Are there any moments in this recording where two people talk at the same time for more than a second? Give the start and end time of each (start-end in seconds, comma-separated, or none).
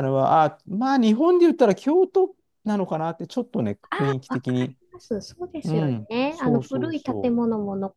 5.6-7.3